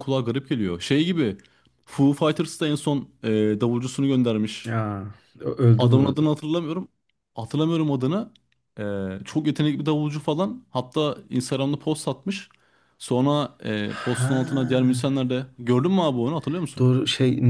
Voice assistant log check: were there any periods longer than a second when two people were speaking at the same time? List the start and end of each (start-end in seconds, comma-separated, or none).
13.8-15.2